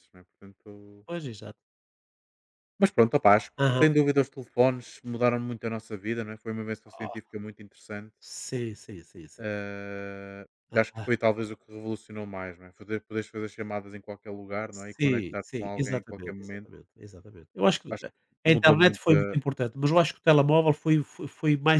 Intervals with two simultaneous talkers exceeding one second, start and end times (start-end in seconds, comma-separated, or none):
14.7-16.7